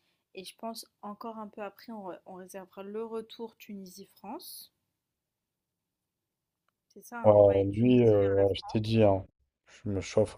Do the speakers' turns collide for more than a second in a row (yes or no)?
yes